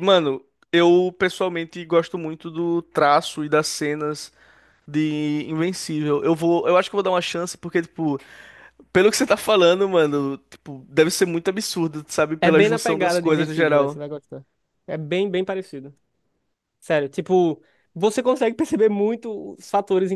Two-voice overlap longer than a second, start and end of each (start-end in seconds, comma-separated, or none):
12.4-14.0